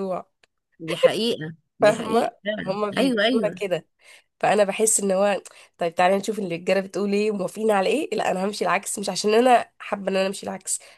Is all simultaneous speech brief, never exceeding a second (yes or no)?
no